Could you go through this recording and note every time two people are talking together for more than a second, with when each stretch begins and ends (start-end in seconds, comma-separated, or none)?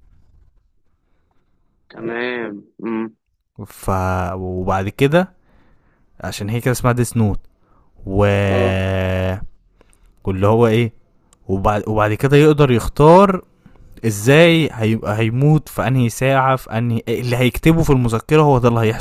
none